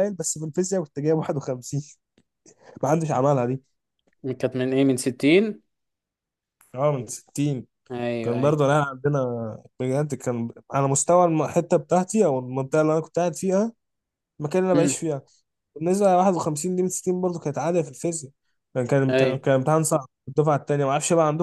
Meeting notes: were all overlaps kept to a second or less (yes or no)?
yes